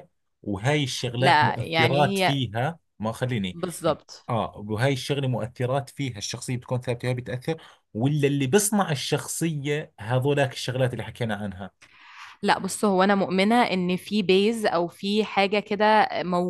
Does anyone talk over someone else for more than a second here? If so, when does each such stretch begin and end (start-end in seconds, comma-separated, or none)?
1.2-2.4